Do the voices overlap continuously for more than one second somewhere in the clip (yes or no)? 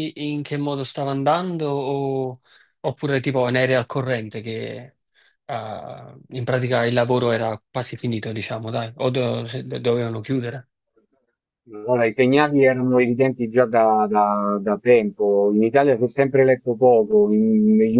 no